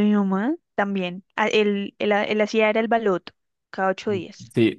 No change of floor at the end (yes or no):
no